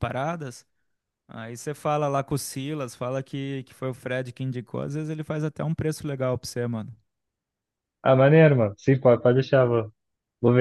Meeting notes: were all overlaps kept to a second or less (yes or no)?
yes